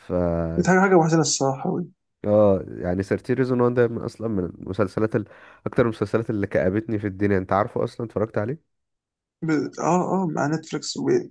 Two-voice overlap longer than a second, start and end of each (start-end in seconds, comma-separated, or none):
none